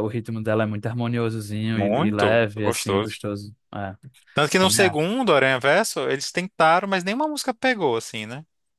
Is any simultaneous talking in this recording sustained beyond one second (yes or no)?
yes